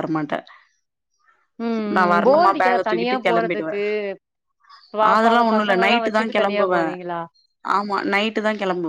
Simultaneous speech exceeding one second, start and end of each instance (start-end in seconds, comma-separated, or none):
2.0-3.7, 5.1-6.8